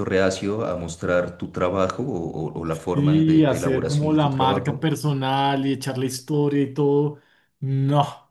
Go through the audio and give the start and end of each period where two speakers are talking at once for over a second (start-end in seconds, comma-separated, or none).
2.9-4.9